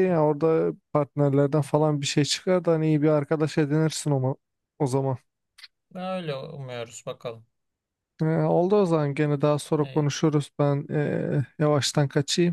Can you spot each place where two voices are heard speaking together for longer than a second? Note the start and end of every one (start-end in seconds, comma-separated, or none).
none